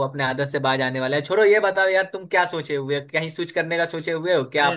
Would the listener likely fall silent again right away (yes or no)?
no